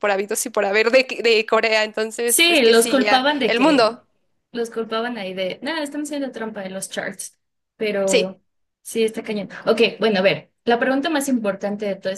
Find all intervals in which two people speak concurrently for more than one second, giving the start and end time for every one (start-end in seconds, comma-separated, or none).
2.2-4.0